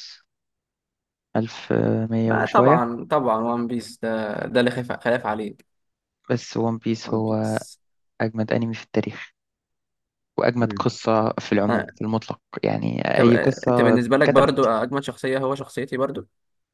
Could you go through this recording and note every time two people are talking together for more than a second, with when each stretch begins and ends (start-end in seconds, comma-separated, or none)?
13.2-14.7